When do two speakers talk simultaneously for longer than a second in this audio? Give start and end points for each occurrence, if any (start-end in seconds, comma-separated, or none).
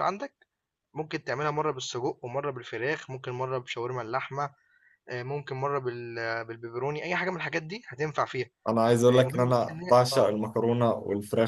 9.1-10.4